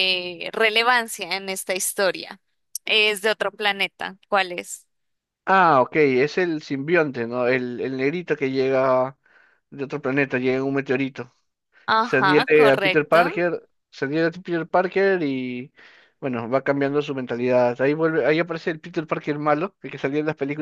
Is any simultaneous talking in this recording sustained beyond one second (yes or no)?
yes